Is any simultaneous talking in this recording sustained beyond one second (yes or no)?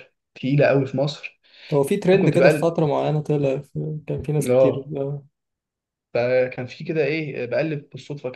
no